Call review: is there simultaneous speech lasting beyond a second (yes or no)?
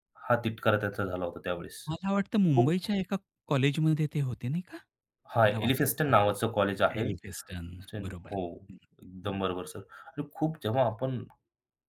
yes